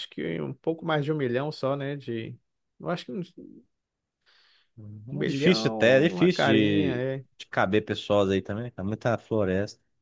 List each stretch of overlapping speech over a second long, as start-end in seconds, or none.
5.1-7.2